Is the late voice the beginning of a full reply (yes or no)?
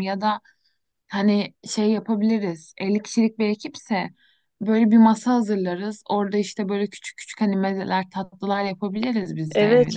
yes